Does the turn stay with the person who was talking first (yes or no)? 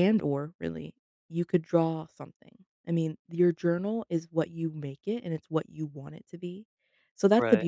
yes